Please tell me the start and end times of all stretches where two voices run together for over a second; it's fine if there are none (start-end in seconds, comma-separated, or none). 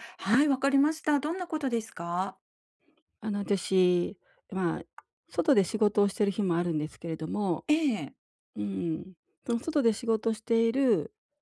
none